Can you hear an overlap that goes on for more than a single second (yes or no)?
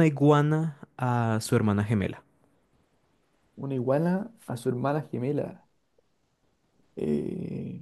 no